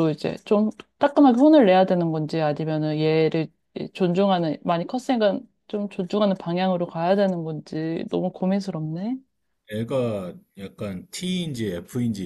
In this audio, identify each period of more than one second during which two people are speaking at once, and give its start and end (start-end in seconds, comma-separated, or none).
none